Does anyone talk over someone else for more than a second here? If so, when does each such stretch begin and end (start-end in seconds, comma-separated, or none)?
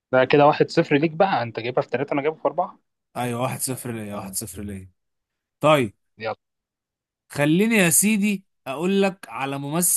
none